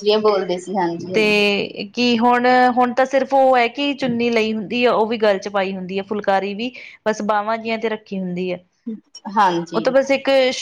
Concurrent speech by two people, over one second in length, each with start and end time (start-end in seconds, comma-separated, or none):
none